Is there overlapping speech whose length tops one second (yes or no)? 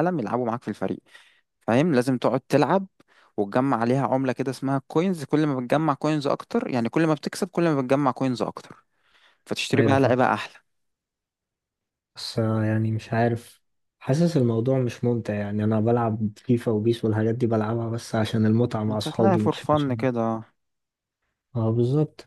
yes